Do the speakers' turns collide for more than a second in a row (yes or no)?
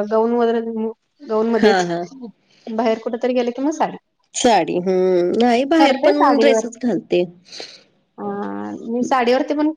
no